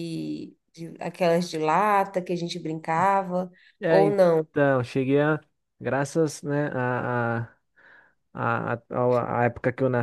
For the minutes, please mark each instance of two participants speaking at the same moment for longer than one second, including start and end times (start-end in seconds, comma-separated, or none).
none